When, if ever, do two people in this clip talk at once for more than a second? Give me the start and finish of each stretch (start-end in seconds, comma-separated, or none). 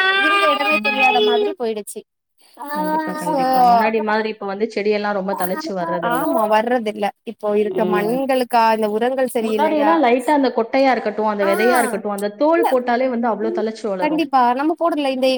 none